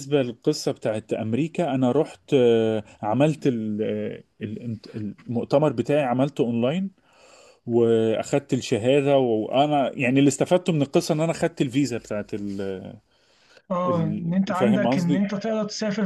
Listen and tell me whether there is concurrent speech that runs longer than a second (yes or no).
yes